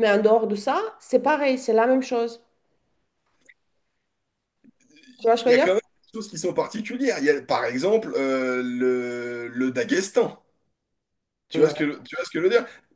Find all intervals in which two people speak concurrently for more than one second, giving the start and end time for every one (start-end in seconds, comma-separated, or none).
none